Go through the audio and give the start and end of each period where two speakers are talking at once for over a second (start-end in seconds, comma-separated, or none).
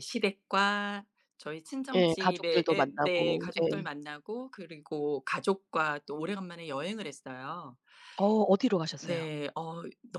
1.9-3.7